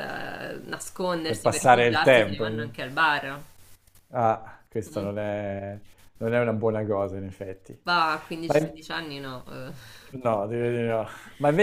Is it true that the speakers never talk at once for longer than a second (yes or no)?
no